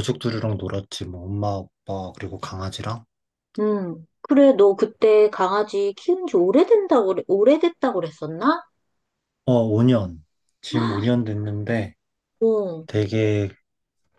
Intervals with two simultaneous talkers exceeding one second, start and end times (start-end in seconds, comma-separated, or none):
none